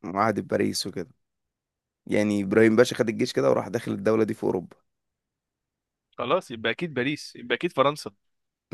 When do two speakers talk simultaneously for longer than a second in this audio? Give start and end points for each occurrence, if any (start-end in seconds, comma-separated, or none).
none